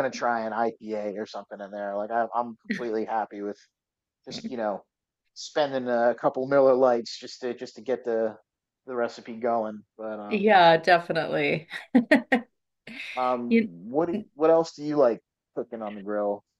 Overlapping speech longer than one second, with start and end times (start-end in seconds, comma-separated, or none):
none